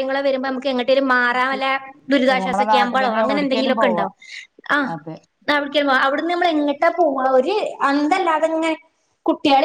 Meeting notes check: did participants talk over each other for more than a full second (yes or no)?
yes